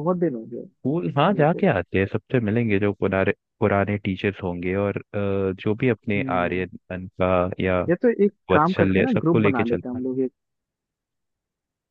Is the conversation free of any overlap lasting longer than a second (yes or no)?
no